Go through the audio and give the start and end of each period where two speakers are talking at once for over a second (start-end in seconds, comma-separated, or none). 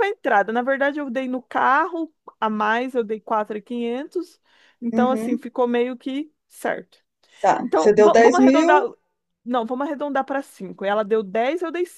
7.6-8.8